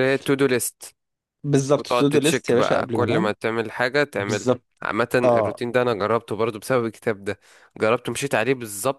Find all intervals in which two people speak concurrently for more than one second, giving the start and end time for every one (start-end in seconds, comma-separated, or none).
1.8-3.3